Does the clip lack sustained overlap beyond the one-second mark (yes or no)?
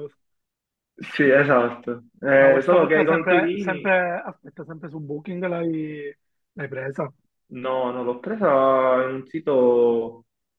no